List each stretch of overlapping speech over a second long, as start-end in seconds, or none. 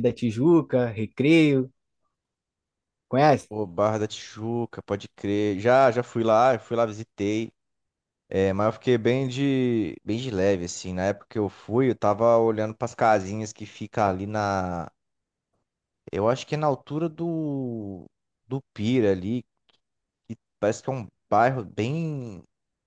none